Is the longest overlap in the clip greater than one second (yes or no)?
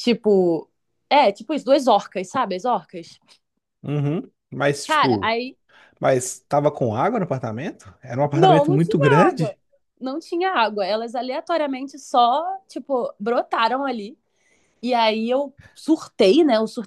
yes